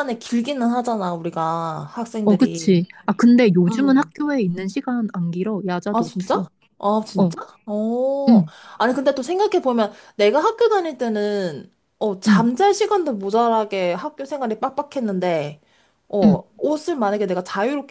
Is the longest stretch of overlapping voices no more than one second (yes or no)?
yes